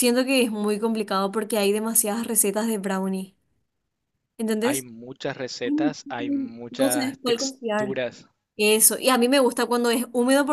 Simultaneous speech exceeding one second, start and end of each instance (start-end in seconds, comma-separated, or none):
6.7-8.0